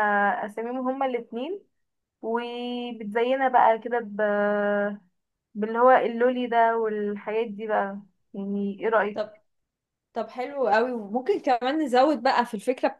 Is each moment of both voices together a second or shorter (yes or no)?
yes